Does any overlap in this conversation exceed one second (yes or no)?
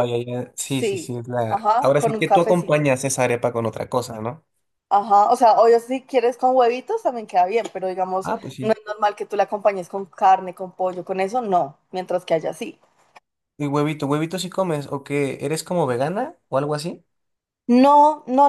yes